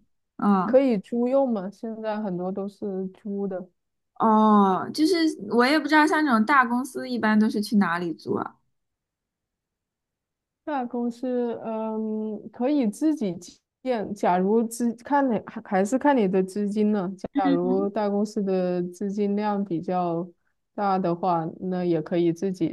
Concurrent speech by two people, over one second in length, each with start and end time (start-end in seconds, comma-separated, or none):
none